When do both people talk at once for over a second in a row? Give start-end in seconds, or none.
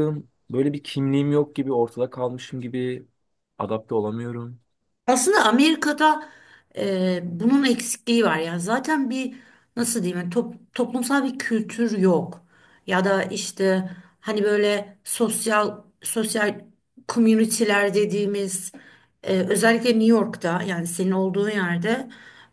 none